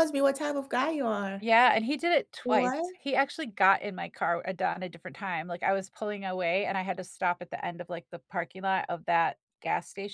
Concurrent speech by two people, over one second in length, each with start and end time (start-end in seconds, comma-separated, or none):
none